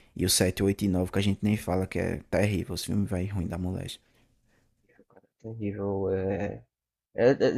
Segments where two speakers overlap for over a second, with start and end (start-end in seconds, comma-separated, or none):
none